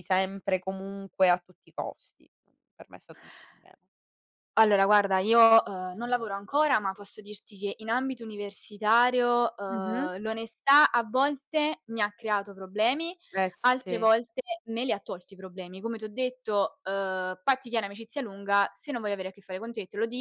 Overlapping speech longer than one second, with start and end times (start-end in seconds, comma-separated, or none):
none